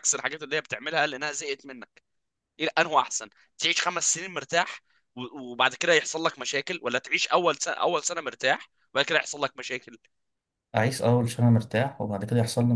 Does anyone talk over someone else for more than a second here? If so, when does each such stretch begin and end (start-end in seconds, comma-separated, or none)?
none